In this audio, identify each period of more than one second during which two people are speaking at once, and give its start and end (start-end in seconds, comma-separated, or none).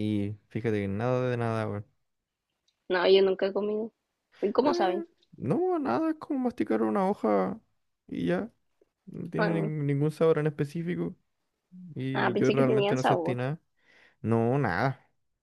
12.2-13.4